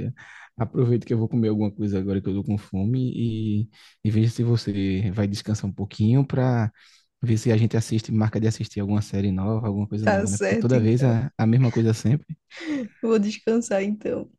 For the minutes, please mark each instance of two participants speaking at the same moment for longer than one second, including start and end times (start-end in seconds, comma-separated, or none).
10.0-11.2